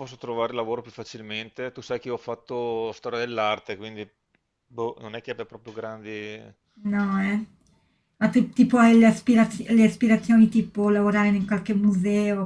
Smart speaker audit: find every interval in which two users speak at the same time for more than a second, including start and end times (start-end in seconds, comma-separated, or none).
none